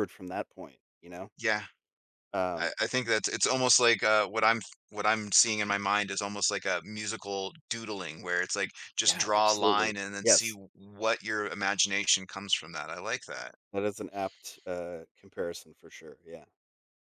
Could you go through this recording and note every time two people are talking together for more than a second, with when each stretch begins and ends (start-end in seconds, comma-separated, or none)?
9.0-10.6